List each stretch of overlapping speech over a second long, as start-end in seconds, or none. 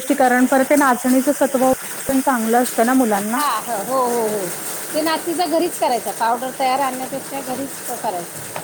none